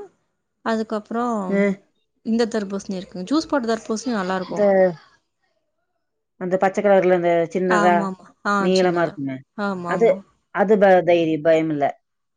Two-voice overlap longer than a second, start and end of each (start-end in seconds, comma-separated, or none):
none